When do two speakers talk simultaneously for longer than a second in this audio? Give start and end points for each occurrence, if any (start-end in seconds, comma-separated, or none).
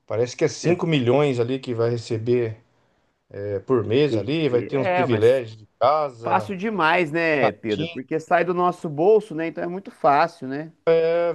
4.0-5.4